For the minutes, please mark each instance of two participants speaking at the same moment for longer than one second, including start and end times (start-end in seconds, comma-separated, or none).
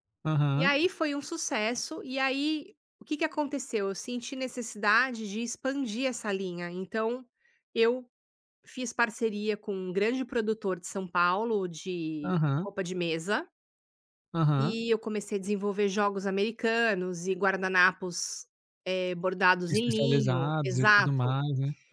19.7-21.4